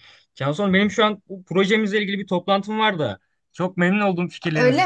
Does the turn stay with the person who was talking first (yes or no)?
no